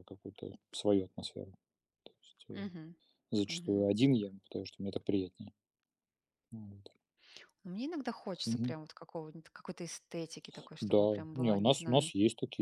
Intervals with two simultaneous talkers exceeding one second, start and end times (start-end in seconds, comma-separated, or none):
10.8-12.1